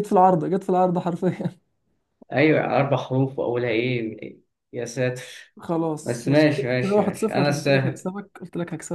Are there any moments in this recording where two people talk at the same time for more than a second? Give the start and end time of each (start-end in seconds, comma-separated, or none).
6.0-8.1